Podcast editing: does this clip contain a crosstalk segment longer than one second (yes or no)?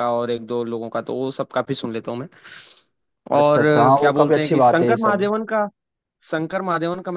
yes